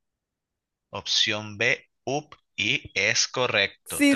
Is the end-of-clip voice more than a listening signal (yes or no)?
yes